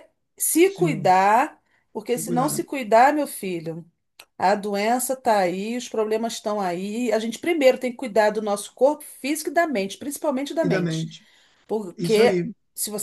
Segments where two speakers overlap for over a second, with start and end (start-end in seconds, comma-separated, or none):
none